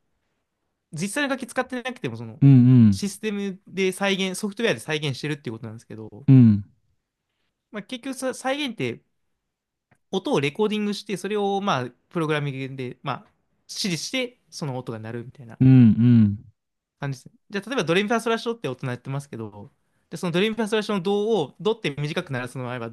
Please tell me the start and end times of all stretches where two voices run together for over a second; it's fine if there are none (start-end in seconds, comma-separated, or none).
none